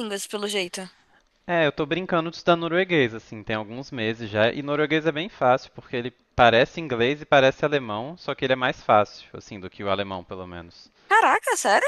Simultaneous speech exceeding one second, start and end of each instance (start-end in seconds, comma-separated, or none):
none